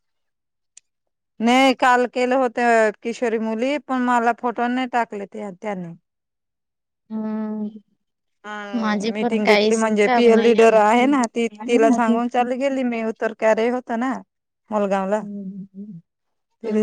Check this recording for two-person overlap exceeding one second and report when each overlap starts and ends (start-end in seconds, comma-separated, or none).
8.8-10.5